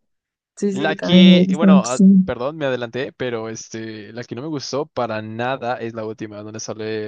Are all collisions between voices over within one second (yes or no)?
no